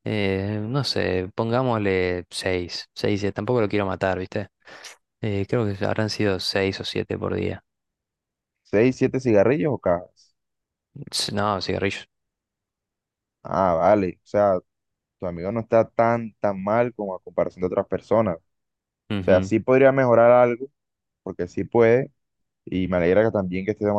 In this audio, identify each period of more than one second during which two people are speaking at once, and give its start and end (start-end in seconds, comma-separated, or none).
none